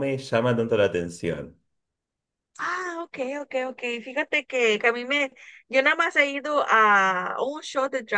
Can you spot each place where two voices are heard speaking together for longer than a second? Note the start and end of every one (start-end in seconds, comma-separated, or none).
none